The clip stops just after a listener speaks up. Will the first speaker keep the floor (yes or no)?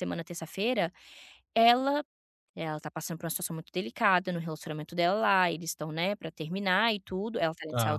yes